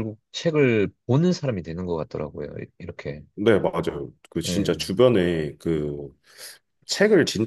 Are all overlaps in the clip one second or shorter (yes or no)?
yes